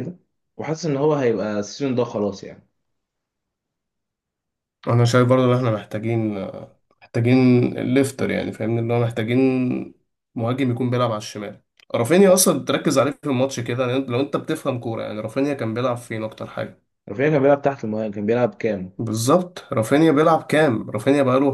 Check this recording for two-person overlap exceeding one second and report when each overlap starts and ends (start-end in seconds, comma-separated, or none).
none